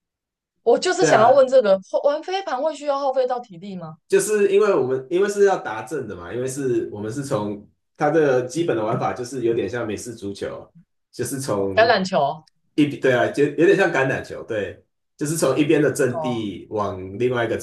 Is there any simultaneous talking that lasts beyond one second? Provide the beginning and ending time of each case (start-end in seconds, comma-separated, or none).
none